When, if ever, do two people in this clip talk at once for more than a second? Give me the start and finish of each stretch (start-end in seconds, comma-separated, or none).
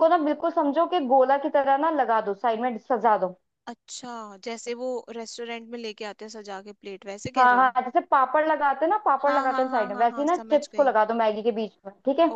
9.2-10.9